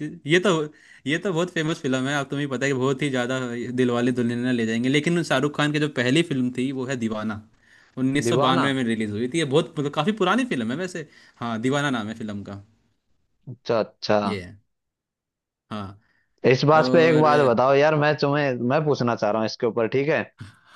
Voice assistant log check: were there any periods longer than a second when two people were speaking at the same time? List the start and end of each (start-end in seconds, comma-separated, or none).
none